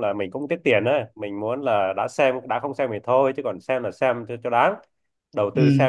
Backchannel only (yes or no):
yes